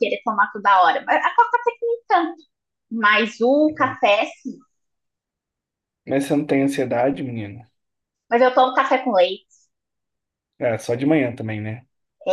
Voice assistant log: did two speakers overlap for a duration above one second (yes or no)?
no